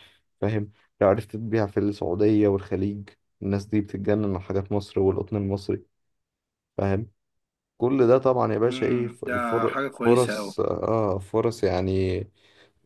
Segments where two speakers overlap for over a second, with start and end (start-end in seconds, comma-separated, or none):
8.7-10.5